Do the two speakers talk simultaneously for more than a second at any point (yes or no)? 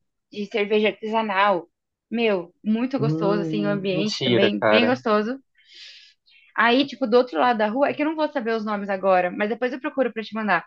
yes